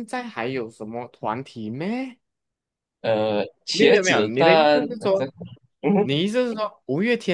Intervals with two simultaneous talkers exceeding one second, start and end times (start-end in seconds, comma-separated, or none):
3.7-5.2